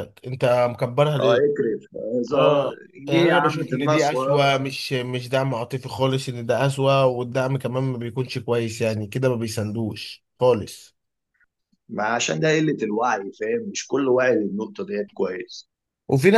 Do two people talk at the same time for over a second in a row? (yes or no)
yes